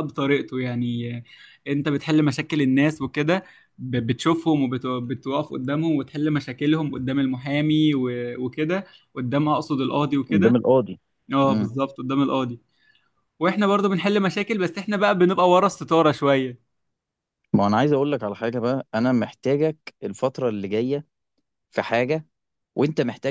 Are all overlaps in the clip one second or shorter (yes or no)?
yes